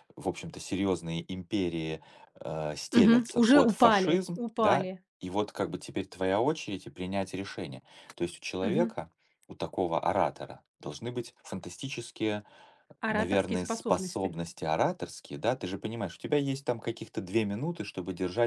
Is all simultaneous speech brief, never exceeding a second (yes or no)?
no